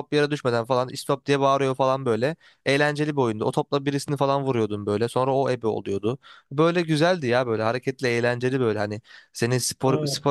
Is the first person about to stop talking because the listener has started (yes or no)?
no